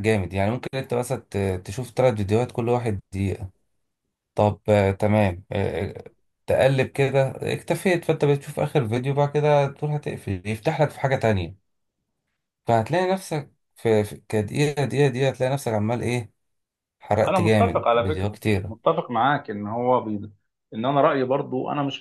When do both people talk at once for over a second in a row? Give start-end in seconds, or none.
17.2-18.7